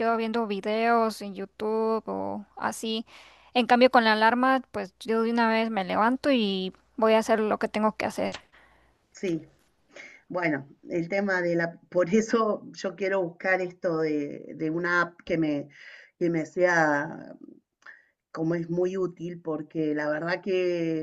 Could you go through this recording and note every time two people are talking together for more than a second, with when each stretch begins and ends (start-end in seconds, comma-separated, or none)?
none